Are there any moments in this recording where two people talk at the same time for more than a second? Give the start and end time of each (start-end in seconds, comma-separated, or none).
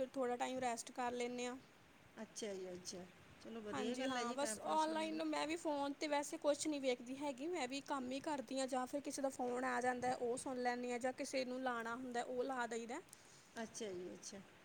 3.7-5.2